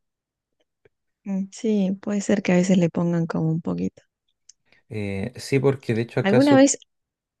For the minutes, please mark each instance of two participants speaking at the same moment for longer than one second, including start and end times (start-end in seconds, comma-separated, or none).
none